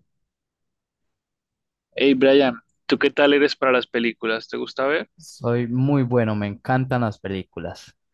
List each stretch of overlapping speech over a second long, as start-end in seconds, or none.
none